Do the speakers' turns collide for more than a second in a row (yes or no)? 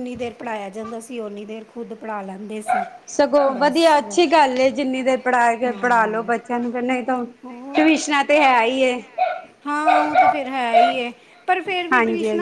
no